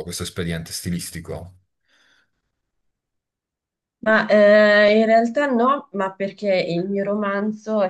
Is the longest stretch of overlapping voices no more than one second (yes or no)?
yes